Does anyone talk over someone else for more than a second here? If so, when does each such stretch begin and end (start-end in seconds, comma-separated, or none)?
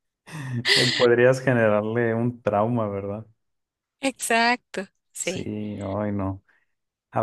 none